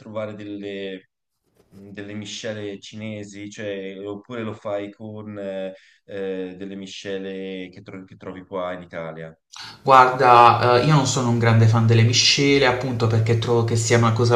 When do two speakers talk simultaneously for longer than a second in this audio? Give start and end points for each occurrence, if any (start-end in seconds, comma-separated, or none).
none